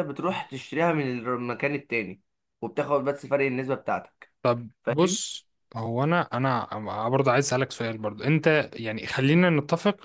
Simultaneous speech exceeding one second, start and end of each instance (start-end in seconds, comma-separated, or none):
none